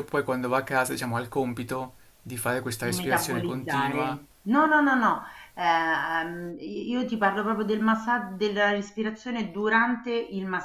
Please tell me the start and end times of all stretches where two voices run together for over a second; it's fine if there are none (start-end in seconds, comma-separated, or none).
2.8-4.2